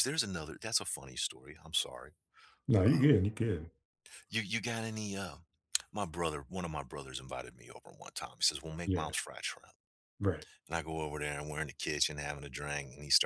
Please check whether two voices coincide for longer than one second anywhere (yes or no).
no